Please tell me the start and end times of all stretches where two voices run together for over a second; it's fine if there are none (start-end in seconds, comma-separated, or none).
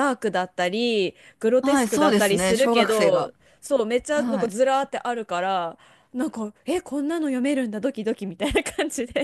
1.6-3.3